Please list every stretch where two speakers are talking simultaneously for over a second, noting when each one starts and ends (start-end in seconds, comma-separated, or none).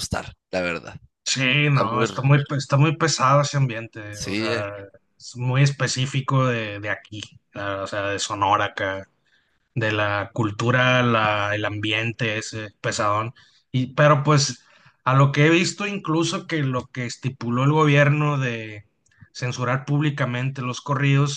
none